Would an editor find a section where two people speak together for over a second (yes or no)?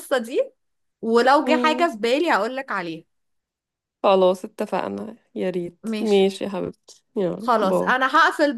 no